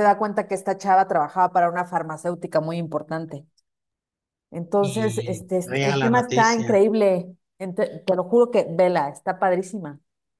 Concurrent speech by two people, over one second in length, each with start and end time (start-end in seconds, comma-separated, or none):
4.8-6.8